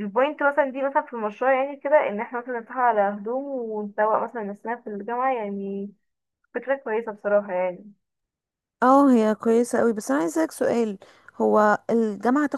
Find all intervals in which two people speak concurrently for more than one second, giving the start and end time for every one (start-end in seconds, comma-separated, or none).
none